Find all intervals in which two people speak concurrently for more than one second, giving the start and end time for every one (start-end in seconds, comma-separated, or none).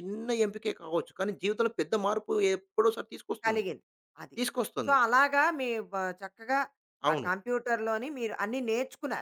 none